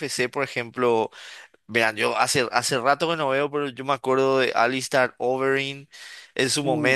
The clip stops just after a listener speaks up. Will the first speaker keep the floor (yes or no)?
yes